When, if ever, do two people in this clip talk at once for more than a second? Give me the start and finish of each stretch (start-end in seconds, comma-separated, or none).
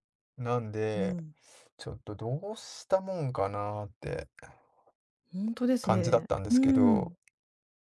5.8-7.2